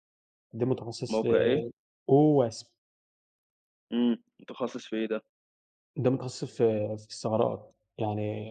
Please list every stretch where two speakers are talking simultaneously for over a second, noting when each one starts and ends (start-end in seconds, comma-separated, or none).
none